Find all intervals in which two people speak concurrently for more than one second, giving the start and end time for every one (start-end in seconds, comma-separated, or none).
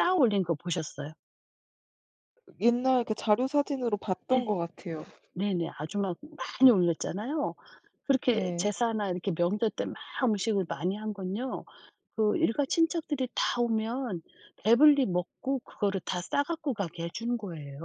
none